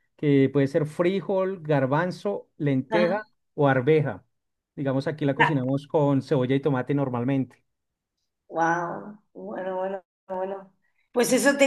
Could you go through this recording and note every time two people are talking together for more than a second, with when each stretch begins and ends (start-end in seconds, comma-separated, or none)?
none